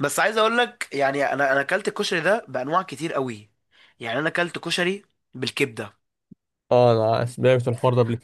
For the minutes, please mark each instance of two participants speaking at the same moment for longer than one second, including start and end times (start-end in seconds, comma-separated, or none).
none